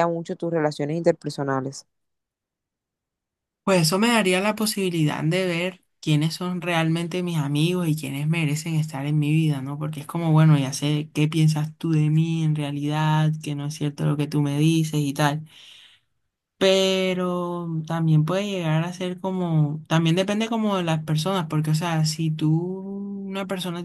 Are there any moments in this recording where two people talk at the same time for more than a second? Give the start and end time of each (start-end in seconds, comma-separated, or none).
none